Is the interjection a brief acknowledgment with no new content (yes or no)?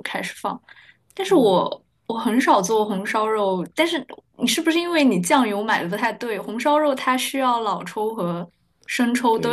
no